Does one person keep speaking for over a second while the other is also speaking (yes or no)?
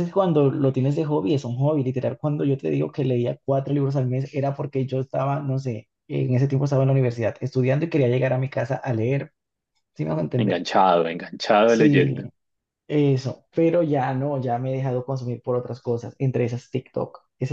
no